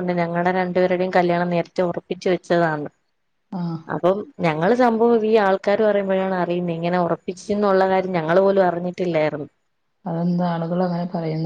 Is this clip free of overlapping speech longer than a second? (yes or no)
yes